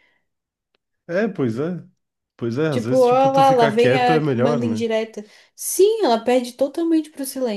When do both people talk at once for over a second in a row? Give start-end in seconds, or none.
2.7-4.8